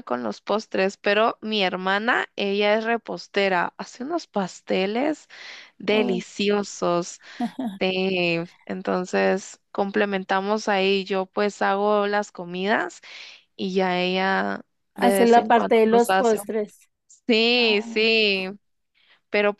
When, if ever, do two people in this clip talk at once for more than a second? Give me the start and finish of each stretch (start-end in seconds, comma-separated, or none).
14.9-16.6